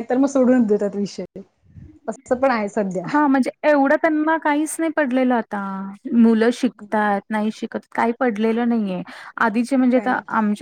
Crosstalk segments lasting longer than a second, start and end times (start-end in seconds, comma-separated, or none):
none